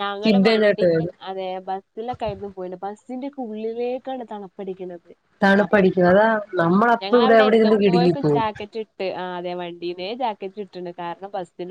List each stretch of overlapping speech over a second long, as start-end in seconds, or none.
7.0-8.4